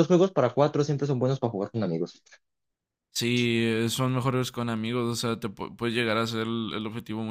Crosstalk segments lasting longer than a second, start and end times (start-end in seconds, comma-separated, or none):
none